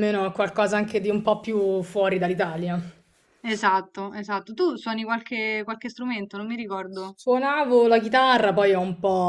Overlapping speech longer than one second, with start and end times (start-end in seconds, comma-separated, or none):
none